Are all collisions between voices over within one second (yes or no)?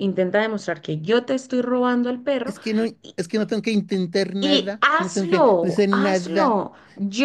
no